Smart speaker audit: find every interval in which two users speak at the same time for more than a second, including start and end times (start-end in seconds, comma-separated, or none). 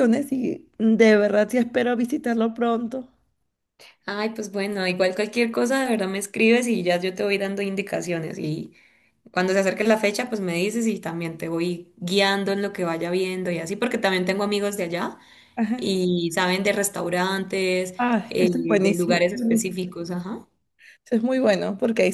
18.0-19.8